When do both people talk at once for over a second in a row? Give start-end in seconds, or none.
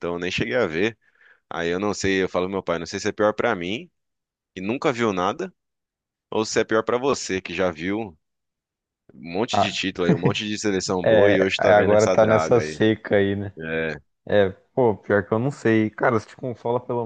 11.0-12.8